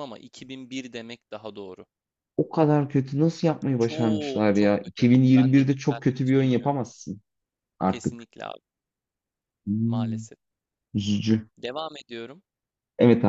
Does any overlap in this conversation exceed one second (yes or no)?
yes